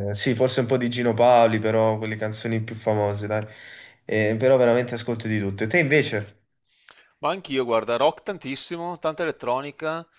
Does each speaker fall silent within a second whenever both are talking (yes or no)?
yes